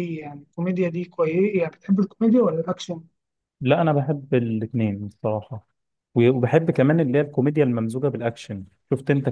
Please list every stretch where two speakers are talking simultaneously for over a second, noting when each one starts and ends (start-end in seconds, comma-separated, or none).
none